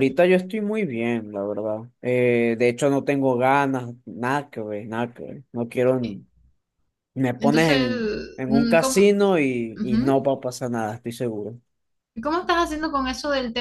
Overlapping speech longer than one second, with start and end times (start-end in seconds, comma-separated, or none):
7.4-9.1